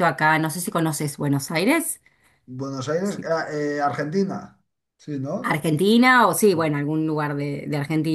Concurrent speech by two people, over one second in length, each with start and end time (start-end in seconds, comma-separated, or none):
none